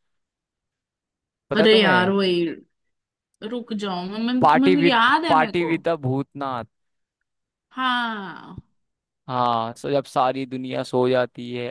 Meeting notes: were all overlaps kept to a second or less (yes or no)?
no